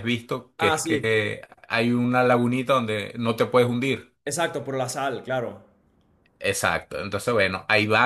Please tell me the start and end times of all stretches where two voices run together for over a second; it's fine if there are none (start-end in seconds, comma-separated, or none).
none